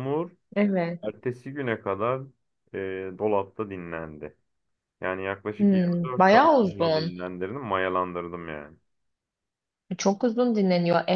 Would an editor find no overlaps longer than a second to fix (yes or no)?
no